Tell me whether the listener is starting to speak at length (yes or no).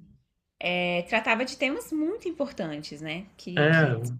no